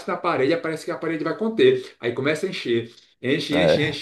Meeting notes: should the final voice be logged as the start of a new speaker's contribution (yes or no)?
no